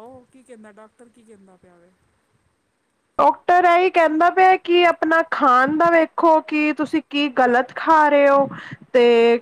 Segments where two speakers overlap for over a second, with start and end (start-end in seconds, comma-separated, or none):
none